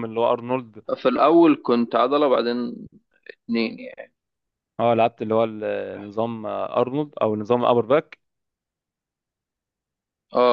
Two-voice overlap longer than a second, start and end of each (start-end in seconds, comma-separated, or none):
none